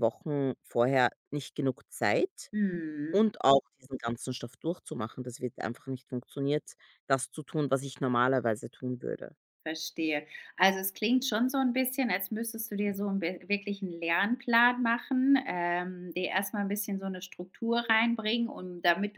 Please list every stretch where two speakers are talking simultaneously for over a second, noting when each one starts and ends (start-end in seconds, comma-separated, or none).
none